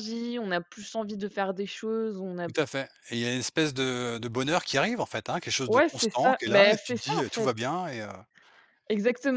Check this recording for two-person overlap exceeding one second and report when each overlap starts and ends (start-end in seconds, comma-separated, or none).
5.7-7.5